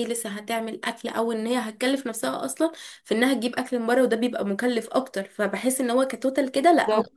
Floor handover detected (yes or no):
no